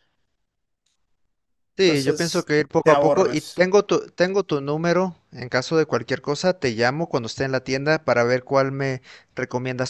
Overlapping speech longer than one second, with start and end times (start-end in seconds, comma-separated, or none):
1.8-3.7